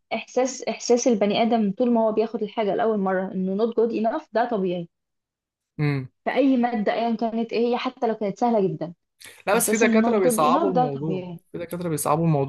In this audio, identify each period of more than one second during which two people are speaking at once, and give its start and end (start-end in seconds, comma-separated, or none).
9.5-11.4